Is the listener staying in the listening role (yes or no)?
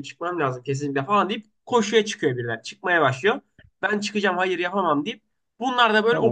yes